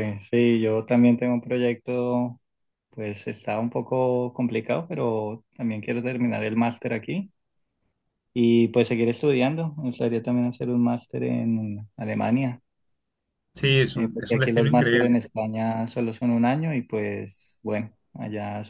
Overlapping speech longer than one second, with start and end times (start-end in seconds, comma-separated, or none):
13.9-15.2